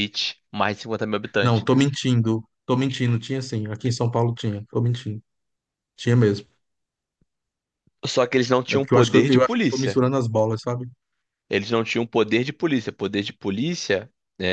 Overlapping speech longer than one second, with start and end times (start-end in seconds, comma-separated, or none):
8.7-10.0